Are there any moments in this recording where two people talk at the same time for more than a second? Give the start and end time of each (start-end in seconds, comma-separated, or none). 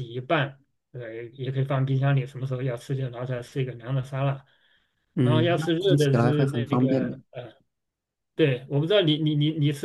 5.2-7.2